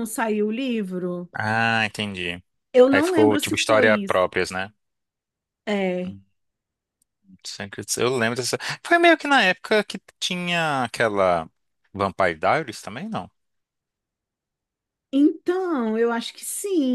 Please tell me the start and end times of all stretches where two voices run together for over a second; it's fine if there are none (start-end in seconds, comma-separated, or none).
2.9-4.2